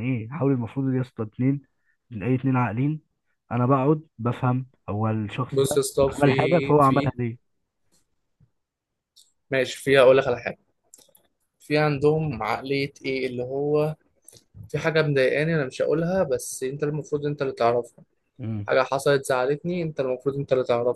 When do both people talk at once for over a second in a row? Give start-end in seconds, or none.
5.5-7.1